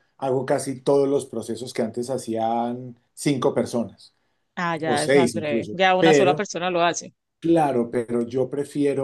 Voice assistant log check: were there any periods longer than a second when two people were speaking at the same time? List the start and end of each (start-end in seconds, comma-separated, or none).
4.8-6.5